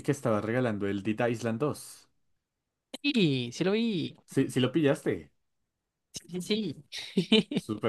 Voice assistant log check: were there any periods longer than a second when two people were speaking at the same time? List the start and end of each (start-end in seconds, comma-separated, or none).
none